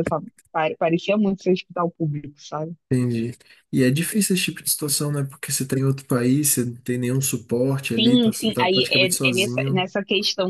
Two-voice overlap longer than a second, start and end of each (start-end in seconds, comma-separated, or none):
8.0-9.9